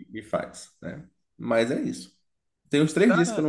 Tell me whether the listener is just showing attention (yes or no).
yes